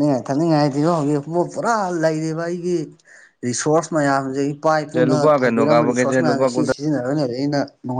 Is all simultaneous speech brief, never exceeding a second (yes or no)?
no